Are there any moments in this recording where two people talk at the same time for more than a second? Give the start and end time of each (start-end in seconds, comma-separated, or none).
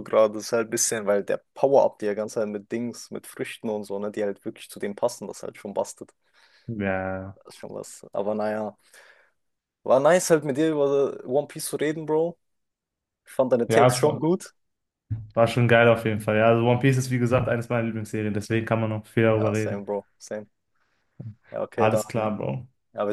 none